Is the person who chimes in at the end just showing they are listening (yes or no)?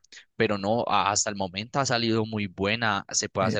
yes